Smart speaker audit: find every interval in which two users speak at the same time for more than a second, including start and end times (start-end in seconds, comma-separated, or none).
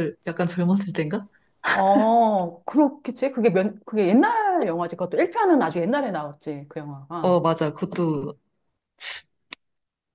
none